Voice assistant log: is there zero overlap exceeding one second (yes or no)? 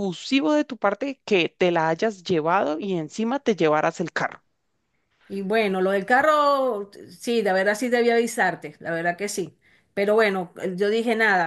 yes